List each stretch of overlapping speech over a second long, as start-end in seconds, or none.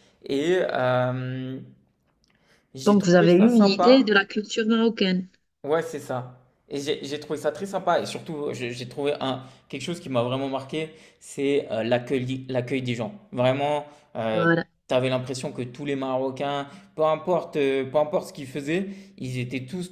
2.8-4.1